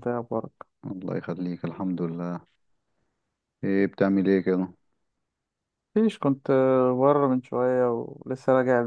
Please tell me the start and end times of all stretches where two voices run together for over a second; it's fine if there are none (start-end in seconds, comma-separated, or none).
none